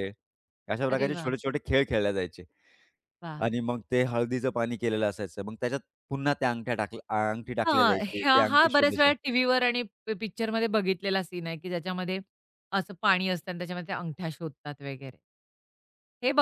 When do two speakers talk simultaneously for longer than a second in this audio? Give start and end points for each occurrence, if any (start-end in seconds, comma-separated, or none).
7.7-9.1